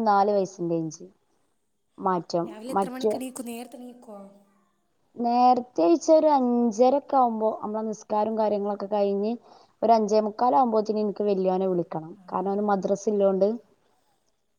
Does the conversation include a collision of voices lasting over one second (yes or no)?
no